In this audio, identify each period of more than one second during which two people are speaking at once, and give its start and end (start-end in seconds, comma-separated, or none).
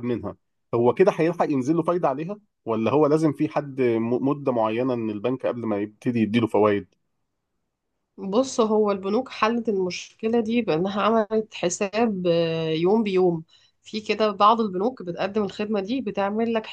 none